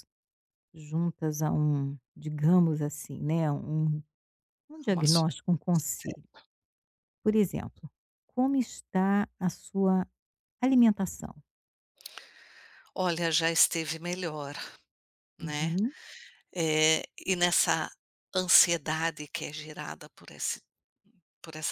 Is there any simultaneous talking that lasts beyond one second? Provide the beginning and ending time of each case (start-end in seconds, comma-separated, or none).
none